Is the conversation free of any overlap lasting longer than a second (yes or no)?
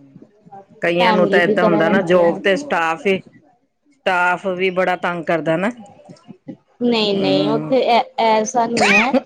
no